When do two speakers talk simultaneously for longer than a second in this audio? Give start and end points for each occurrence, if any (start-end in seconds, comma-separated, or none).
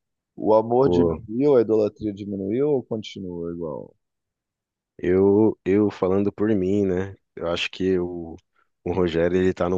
none